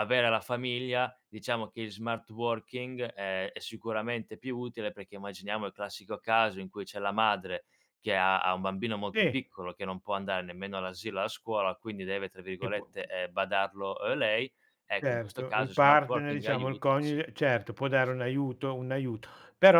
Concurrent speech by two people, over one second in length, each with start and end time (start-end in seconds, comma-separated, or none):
15.0-17.2